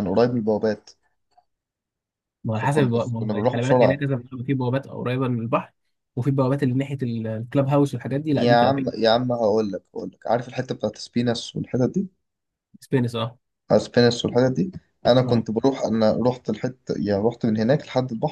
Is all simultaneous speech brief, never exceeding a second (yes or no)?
no